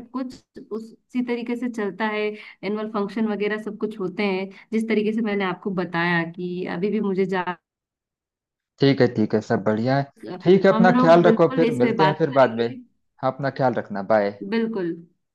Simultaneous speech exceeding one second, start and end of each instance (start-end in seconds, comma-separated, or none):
10.7-12.7